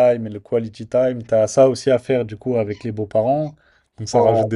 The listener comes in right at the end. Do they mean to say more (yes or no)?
no